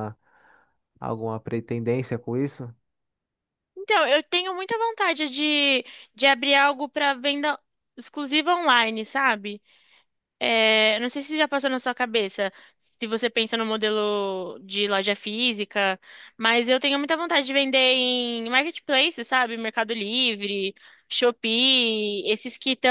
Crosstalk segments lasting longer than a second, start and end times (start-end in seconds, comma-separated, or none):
none